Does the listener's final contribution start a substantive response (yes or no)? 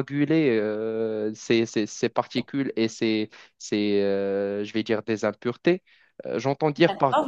no